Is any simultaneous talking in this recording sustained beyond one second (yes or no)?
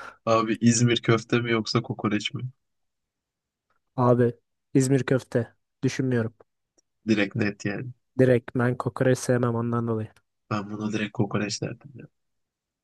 no